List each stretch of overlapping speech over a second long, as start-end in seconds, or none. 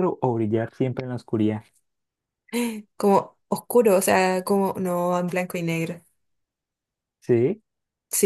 none